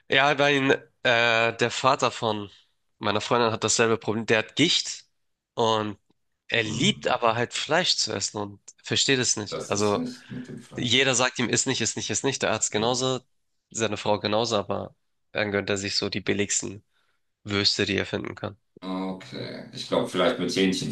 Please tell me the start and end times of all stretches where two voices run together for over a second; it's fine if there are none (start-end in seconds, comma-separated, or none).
none